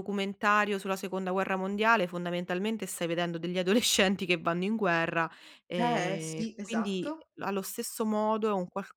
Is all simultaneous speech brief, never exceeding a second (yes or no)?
no